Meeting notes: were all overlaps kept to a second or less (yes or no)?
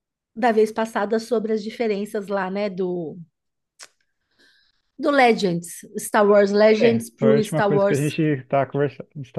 no